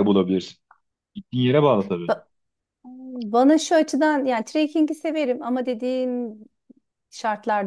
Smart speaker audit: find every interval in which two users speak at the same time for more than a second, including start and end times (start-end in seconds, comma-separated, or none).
none